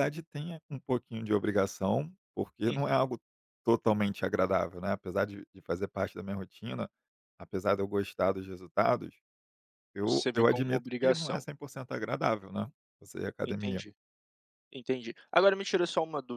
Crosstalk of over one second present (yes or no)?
yes